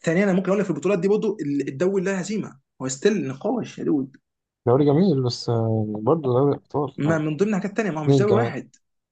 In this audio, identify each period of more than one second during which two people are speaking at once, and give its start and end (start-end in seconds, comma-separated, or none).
none